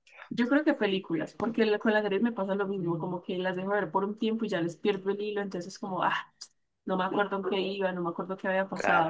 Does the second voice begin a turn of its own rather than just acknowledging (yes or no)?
yes